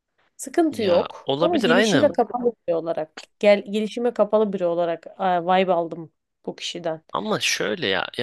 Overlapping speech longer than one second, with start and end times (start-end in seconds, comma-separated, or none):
0.7-2.2